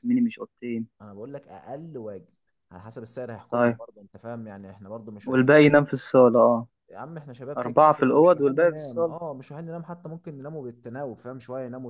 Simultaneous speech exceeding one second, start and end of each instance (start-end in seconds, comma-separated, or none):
7.6-9.2